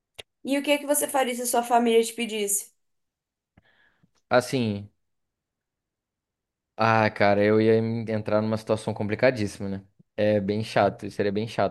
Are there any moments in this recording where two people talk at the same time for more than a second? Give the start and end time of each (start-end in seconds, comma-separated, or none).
none